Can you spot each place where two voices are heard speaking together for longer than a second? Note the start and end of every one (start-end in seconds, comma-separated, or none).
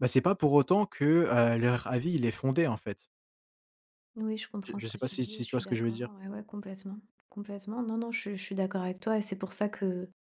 4.6-6.1